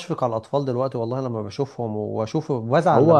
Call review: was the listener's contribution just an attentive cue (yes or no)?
no